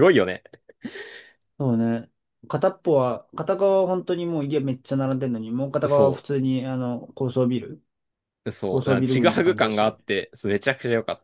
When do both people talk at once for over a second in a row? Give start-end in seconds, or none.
8.7-10.0